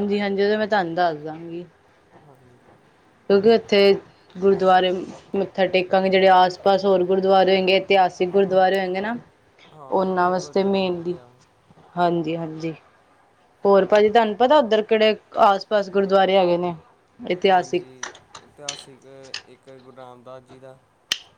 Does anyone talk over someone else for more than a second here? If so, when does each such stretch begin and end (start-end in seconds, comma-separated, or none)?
9.9-11.1